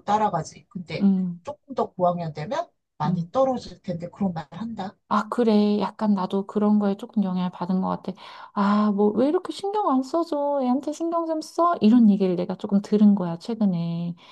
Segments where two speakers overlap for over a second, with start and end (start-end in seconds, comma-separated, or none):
none